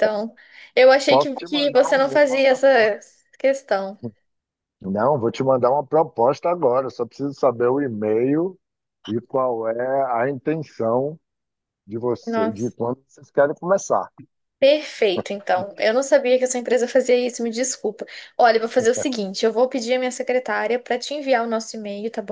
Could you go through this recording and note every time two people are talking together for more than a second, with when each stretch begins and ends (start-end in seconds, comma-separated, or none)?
1.1-2.9